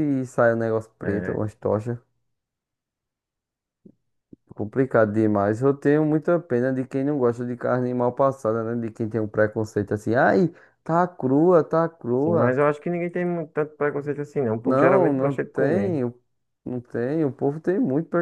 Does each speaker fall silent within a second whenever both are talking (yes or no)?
no